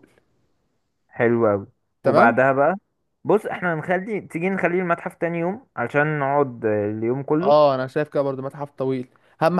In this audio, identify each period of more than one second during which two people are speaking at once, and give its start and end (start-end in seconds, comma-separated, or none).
none